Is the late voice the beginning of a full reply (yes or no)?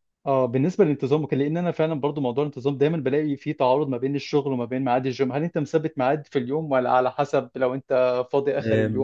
yes